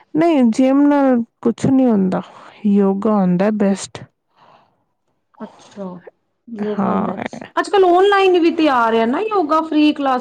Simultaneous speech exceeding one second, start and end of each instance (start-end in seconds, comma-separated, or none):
none